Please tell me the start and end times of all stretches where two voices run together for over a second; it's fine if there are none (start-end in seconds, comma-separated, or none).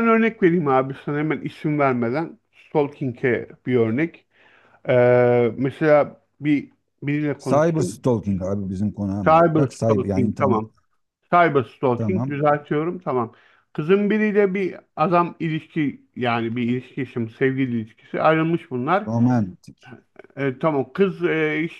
9.2-10.6